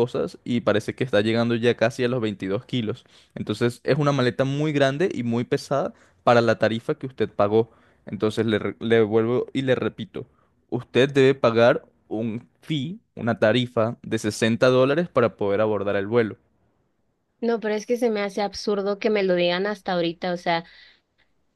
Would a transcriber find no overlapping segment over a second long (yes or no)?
yes